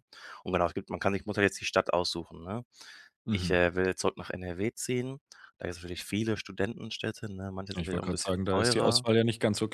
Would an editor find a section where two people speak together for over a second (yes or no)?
yes